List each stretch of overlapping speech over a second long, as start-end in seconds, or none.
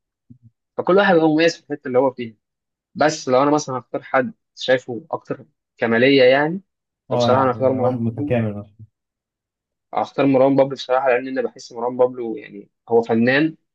7.1-8.3